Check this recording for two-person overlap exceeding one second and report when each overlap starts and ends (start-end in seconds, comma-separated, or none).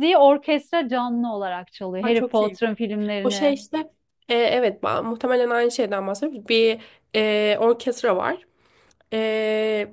none